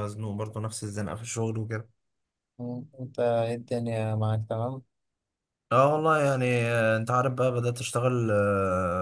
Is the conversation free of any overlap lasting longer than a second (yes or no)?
yes